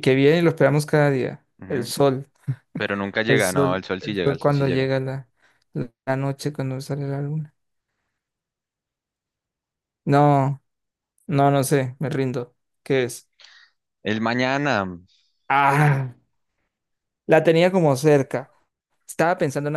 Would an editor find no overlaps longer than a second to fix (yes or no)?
no